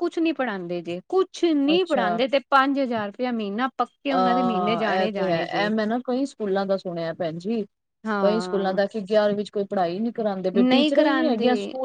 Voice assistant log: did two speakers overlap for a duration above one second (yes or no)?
yes